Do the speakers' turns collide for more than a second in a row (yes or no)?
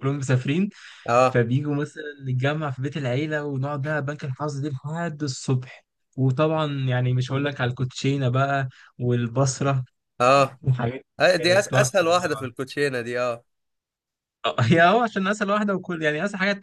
yes